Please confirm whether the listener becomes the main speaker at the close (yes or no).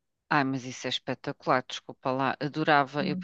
no